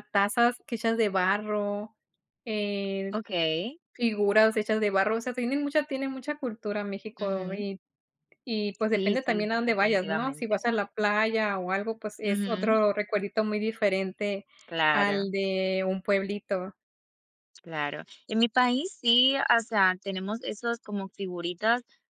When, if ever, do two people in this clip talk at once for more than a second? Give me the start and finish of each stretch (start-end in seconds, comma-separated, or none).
8.9-10.7